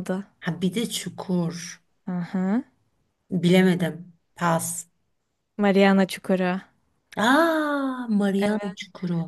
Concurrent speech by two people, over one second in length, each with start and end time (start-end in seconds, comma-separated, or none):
none